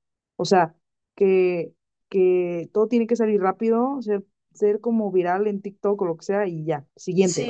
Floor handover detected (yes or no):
no